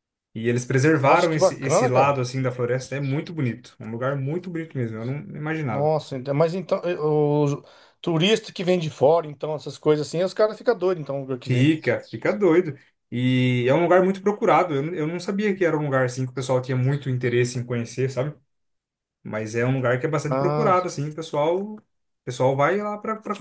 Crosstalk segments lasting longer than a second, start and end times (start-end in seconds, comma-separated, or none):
1.0-2.2